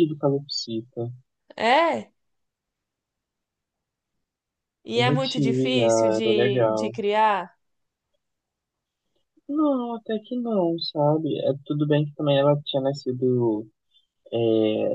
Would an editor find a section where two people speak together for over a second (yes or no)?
yes